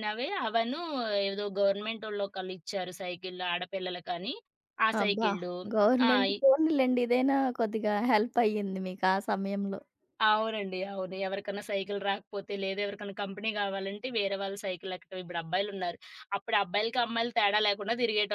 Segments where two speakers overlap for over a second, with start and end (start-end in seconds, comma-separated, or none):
none